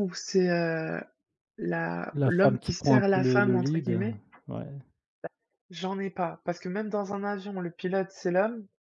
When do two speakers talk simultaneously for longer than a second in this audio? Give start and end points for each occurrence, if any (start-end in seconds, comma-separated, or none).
2.1-4.0